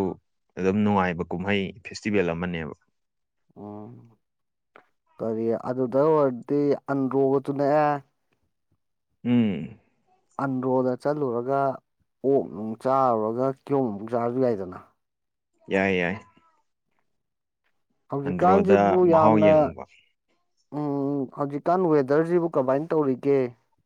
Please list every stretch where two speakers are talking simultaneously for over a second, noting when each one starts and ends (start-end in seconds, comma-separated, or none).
18.2-19.5